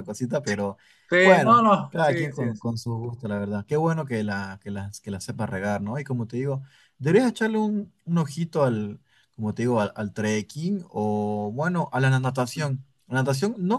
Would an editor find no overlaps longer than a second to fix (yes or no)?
no